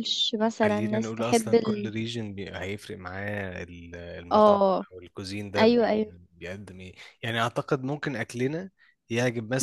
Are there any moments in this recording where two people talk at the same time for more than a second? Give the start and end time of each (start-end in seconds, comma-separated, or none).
0.6-1.9